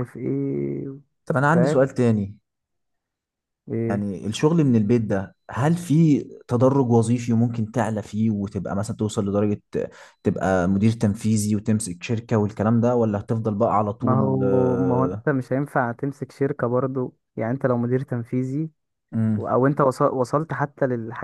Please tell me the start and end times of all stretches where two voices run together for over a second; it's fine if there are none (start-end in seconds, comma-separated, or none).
14.0-15.2